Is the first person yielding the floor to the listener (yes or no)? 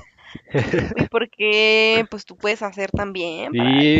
yes